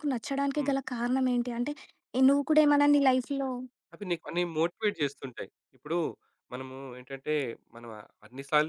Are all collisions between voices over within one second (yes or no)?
yes